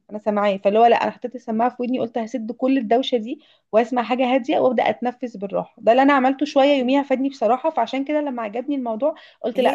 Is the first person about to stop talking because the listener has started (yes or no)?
no